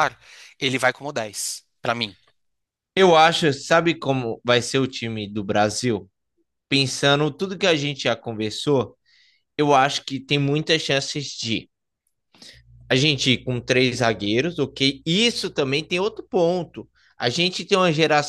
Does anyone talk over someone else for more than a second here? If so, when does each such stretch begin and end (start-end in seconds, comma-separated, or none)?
none